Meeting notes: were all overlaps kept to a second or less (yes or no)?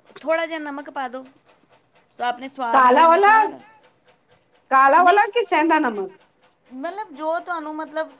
yes